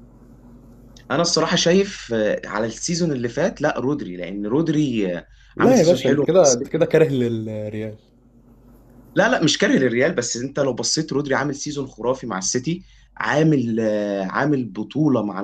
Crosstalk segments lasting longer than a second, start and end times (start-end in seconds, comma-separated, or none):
5.6-6.9